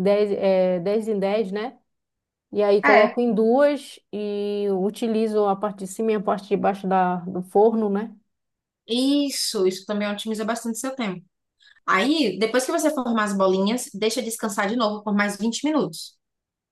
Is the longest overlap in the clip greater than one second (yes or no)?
no